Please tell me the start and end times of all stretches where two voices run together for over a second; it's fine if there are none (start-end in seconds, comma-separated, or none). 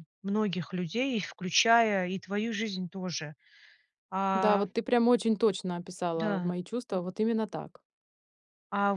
none